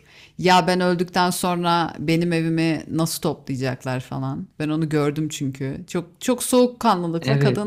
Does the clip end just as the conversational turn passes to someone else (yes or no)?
no